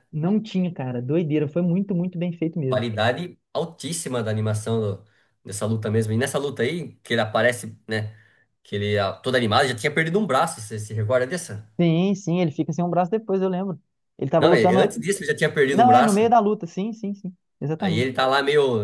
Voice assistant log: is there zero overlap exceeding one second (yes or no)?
yes